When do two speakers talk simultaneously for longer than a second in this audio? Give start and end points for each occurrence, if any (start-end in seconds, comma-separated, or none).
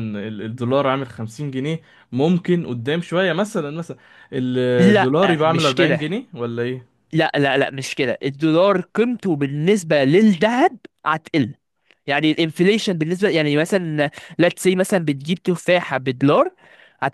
4.8-6.2